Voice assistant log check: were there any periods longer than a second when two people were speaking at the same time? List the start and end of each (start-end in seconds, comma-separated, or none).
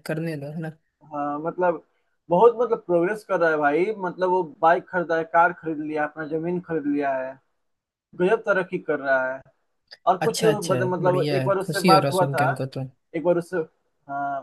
10.2-12.5